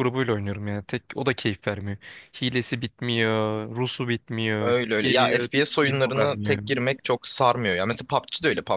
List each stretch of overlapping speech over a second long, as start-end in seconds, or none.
4.6-6.6